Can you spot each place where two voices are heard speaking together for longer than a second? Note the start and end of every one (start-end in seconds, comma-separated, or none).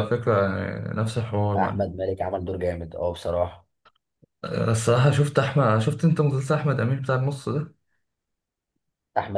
none